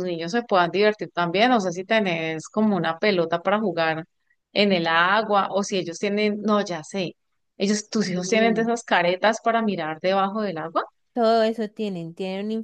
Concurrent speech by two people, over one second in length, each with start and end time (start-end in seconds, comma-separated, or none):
none